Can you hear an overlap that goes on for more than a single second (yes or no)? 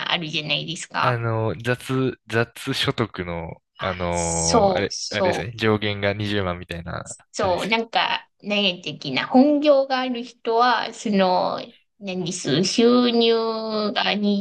yes